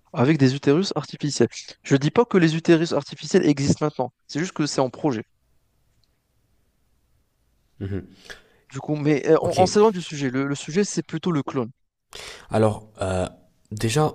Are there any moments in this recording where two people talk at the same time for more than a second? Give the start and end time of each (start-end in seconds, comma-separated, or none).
none